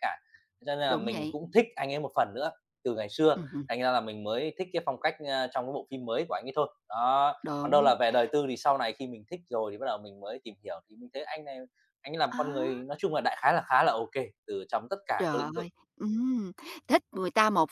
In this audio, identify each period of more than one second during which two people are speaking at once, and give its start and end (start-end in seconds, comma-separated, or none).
none